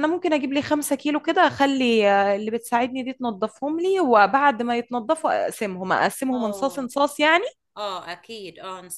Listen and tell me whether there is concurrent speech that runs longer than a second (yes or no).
no